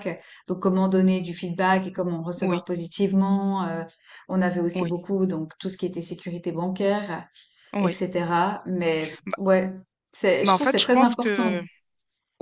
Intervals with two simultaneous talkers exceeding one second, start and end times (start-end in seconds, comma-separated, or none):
10.4-11.6